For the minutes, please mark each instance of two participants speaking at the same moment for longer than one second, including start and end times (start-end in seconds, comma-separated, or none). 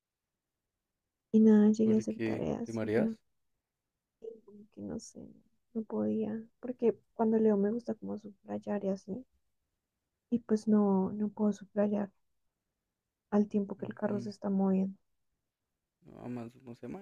1.8-3.1